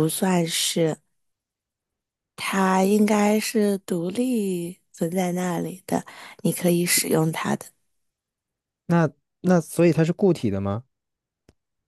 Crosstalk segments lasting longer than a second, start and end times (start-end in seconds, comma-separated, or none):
none